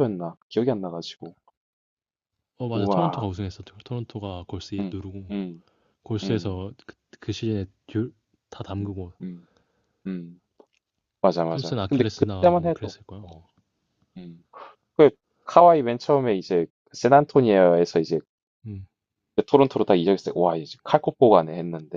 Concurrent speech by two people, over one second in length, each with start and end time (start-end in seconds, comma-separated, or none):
11.5-13.4